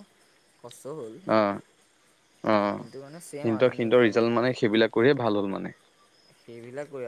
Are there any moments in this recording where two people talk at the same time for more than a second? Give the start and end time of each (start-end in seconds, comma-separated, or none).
2.8-4.3